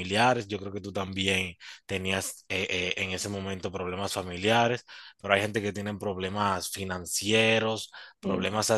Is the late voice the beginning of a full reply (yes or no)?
no